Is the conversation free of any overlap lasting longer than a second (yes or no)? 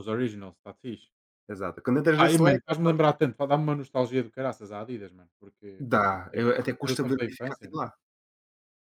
no